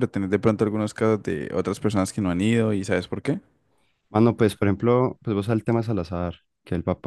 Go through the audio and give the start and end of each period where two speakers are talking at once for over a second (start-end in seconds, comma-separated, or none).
none